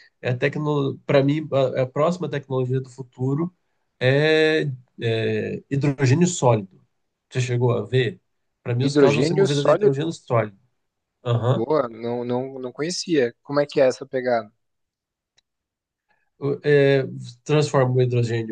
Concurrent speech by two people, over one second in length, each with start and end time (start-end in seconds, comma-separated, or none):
8.8-10.2